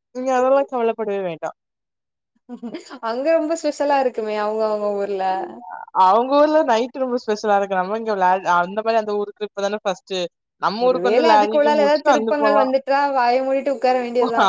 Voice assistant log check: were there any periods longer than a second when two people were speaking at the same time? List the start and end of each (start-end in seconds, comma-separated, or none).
10.9-12.6